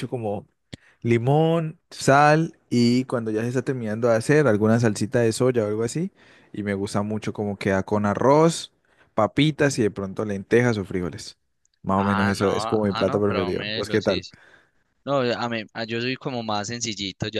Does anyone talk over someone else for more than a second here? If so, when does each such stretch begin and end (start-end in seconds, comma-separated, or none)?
11.9-14.2